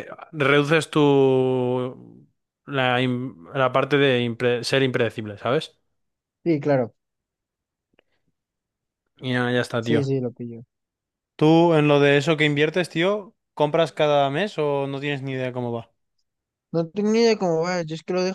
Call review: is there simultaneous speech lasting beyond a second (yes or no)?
no